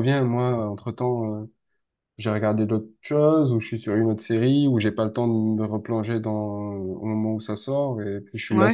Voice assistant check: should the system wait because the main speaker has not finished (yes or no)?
no